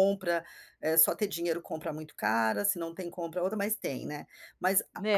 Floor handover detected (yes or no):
no